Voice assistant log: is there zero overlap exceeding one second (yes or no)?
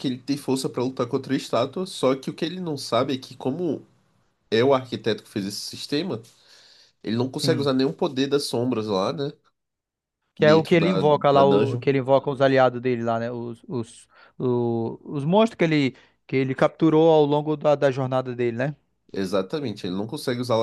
no